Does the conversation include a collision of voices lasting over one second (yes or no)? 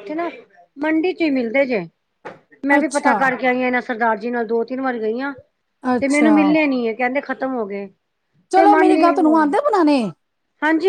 no